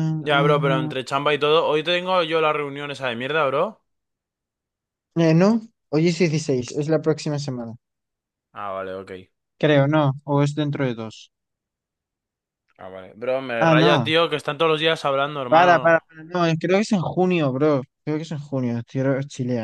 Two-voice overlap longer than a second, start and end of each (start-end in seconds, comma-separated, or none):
none